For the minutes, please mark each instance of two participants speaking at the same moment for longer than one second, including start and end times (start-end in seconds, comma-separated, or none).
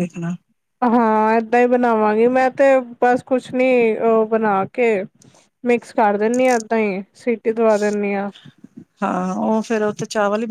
none